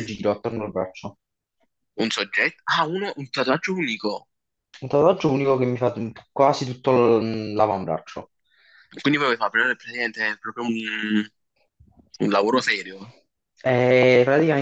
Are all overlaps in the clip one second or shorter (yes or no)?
yes